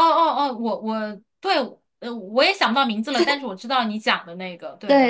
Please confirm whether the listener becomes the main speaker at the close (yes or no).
yes